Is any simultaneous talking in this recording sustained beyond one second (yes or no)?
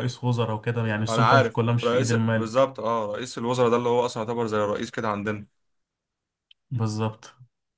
yes